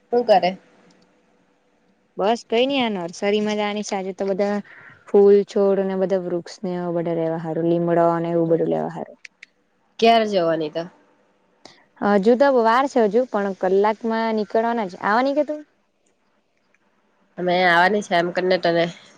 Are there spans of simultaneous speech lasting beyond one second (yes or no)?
no